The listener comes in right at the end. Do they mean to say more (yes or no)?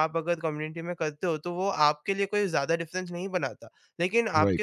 no